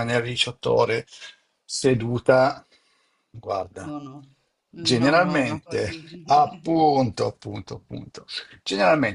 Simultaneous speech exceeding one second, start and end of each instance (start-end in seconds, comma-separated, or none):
4.7-6.1